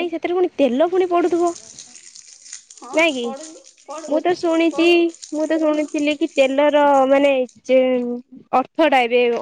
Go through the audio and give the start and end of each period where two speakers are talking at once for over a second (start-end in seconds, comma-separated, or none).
none